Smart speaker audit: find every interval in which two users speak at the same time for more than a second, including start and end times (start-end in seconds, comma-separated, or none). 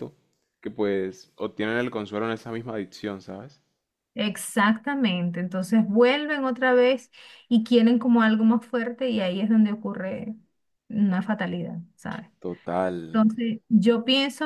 none